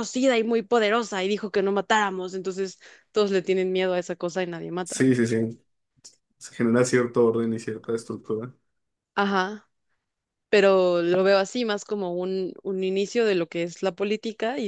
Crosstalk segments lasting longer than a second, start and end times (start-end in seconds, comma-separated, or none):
none